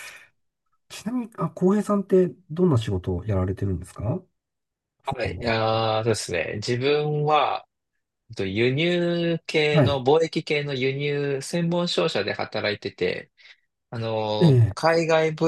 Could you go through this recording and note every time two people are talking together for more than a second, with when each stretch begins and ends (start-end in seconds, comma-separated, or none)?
none